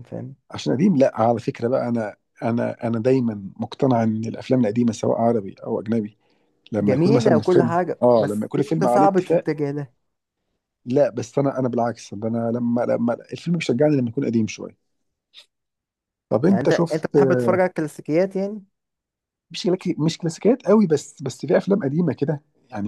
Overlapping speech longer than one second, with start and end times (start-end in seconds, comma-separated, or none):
6.8-9.5